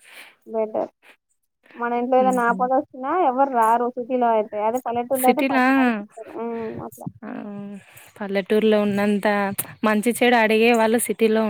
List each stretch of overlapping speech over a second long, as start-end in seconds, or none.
none